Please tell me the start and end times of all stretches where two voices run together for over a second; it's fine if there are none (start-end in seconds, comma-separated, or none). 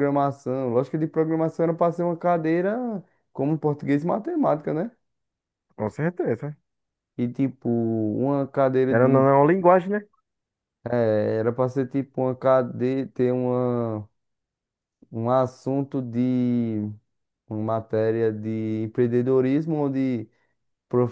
none